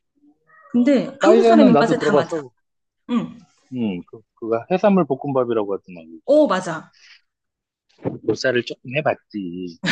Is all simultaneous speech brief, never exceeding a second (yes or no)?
no